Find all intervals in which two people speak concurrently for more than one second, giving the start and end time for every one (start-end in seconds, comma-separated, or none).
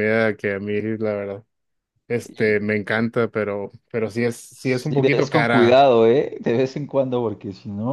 4.5-5.8